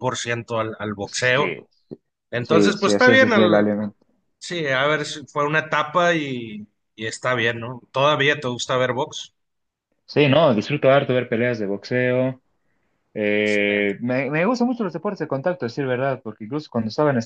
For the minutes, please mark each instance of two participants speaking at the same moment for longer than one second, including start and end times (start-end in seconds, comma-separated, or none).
2.4-3.7